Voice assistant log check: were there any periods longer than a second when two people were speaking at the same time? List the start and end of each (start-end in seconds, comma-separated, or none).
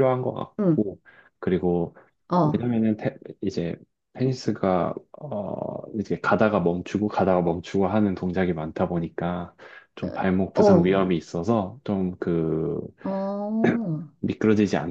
none